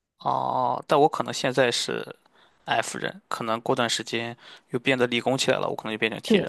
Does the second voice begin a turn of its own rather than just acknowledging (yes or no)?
yes